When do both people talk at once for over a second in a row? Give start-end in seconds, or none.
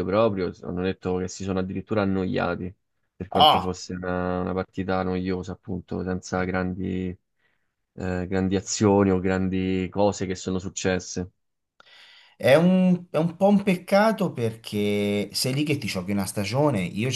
none